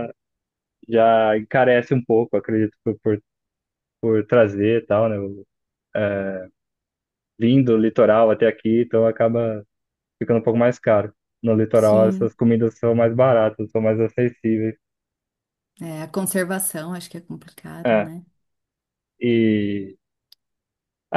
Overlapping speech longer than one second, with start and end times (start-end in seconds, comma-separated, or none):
none